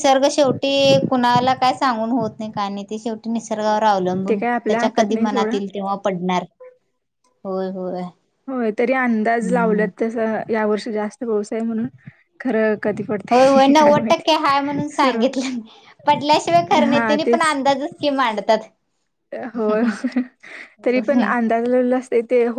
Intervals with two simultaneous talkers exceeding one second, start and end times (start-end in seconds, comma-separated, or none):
4.3-5.5, 13.3-15.2